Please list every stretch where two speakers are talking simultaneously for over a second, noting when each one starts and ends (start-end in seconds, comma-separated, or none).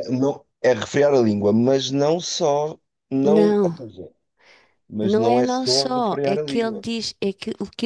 5.0-6.8